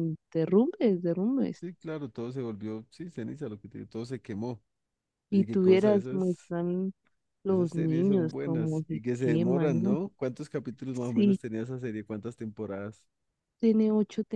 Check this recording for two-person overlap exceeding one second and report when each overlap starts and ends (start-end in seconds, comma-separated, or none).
5.3-6.5, 7.5-10.0